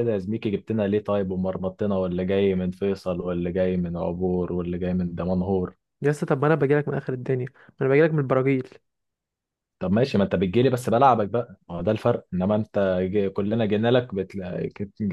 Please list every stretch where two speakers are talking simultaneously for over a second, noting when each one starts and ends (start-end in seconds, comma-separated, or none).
none